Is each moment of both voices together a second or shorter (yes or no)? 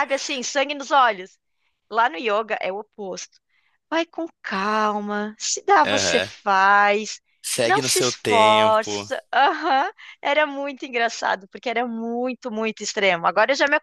no